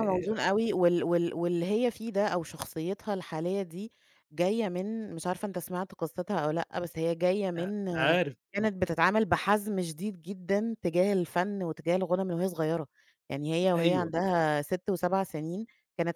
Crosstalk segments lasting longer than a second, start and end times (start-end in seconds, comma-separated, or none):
none